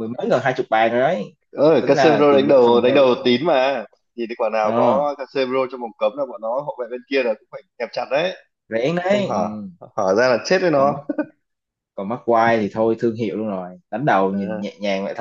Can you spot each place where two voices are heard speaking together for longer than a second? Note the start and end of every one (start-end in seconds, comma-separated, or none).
1.8-3.1